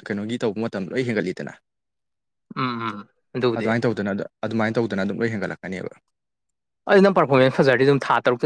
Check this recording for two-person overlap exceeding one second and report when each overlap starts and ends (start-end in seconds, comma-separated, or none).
none